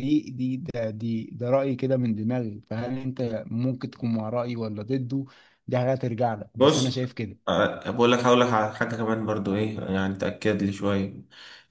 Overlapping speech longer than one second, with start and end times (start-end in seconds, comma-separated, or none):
none